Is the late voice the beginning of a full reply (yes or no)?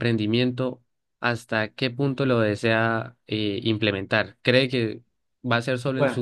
no